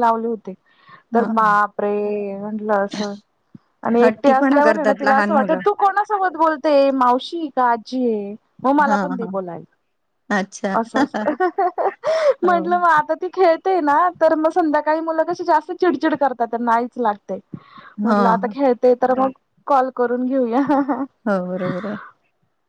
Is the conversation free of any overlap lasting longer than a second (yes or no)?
no